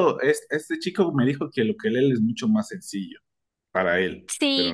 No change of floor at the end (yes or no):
no